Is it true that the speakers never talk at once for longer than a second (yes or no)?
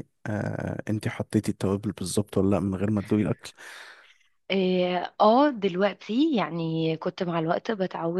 yes